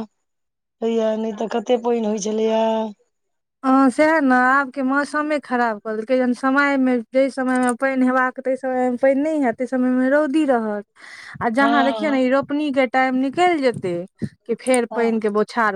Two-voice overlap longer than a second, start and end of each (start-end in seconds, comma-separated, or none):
none